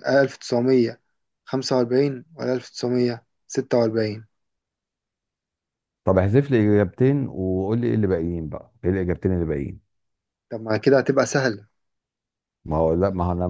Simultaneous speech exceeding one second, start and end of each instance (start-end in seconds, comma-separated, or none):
none